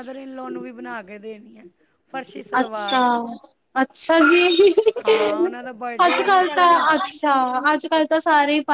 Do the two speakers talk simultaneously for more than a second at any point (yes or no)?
yes